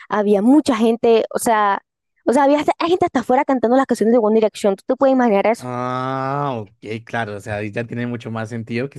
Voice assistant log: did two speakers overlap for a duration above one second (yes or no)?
no